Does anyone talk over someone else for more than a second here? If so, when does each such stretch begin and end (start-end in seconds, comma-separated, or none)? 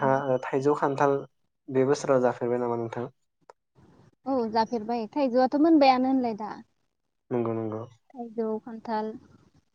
none